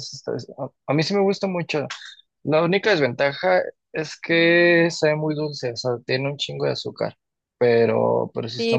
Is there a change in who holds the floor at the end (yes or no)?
yes